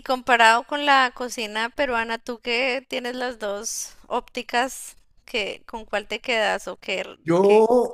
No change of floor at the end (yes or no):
no